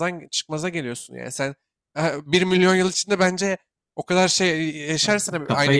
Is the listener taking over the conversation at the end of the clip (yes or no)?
no